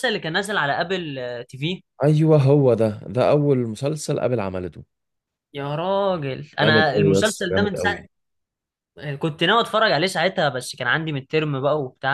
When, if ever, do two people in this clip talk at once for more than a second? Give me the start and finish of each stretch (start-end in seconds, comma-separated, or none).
6.6-8.0